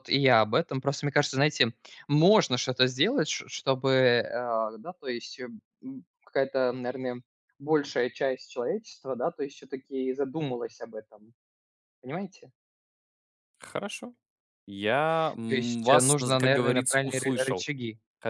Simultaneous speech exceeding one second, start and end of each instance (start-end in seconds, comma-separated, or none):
15.5-17.7